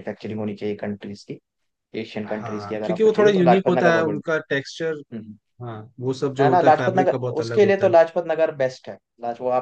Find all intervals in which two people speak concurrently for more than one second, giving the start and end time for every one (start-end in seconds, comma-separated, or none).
2.3-4.4, 6.4-7.9